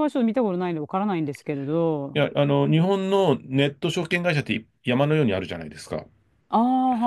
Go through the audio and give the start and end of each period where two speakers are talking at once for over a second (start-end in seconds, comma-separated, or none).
none